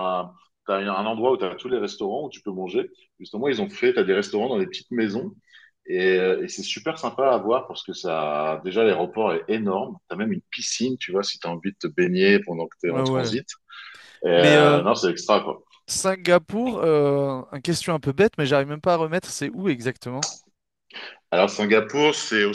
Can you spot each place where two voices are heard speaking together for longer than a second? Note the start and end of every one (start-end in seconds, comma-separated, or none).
none